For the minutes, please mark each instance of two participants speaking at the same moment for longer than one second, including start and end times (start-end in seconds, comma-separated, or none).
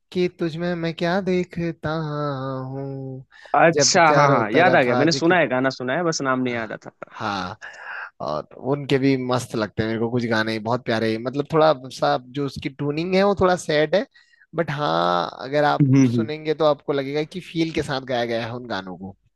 3.7-5.3